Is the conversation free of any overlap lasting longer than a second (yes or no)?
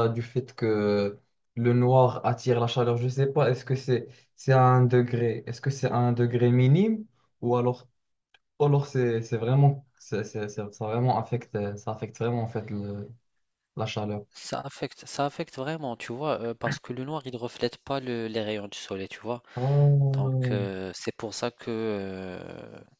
yes